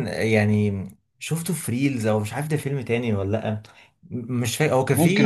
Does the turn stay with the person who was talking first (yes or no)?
yes